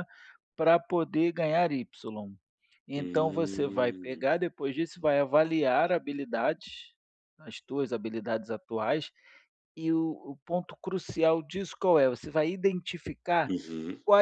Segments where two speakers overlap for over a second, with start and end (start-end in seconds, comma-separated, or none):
3.0-4.2